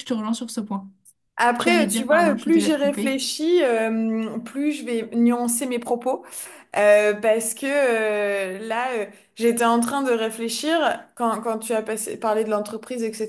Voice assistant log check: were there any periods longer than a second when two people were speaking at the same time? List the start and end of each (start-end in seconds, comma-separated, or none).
1.6-3.2